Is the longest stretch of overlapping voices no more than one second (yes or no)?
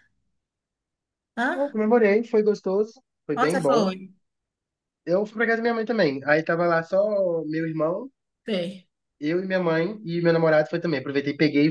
yes